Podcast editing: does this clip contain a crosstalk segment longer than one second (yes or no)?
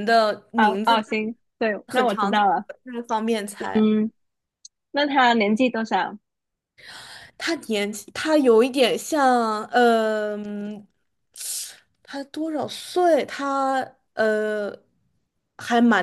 yes